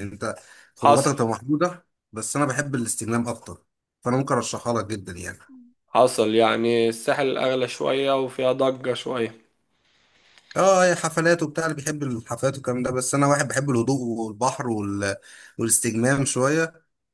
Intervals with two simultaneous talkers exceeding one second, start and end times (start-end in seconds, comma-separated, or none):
none